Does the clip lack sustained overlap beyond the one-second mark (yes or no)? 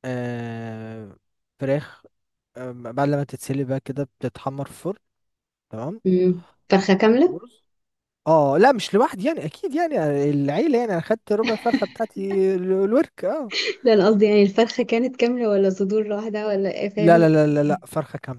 yes